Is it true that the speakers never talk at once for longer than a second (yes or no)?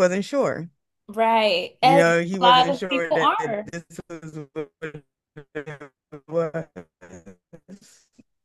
no